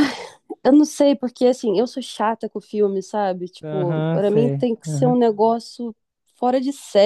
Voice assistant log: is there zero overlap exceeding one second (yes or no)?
no